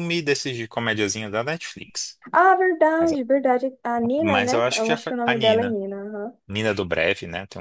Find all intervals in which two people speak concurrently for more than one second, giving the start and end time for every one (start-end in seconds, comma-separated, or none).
4.2-5.8